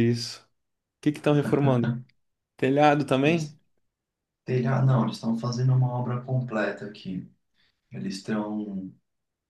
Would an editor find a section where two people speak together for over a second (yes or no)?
no